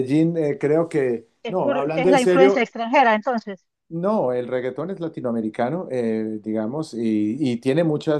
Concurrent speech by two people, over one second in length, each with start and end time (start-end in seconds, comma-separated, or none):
1.4-2.7